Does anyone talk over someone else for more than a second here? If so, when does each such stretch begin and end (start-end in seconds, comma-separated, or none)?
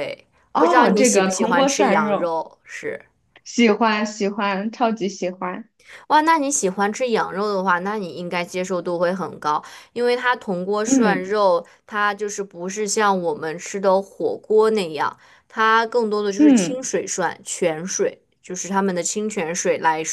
0.5-2.3